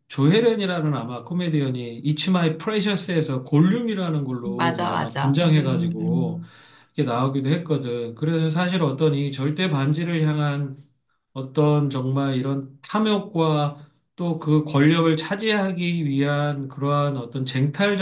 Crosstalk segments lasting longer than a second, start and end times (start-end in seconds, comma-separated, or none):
4.5-6.4